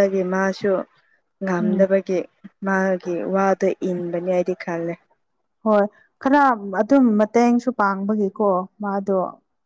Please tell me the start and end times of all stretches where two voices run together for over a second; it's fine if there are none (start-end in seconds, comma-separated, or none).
none